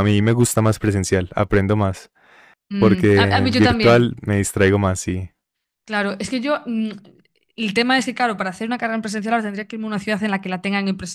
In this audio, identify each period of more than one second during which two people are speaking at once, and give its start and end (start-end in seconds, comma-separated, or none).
2.8-4.2